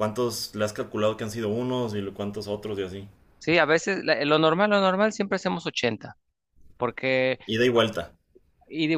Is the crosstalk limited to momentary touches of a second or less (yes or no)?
yes